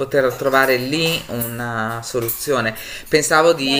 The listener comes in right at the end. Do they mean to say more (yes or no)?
yes